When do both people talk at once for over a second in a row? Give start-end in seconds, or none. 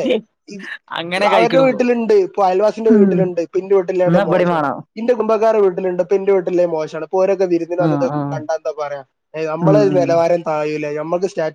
none